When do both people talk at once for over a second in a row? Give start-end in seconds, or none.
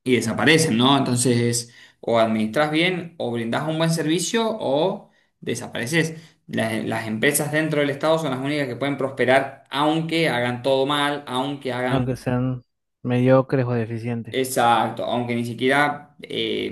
none